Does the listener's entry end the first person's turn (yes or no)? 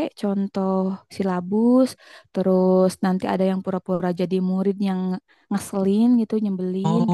yes